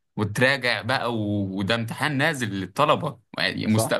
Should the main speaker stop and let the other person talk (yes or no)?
no